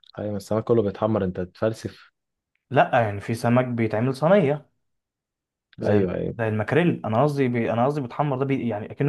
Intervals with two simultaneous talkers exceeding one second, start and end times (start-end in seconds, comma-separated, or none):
none